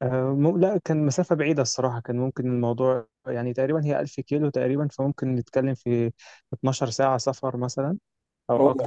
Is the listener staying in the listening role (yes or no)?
no